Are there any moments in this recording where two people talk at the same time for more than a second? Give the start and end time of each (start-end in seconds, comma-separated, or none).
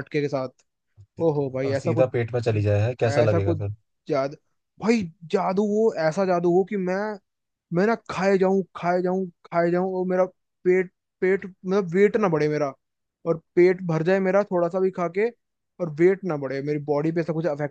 none